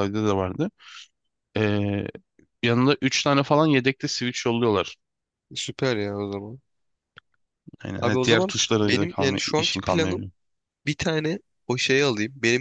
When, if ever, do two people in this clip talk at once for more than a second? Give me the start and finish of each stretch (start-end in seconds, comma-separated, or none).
8.0-10.3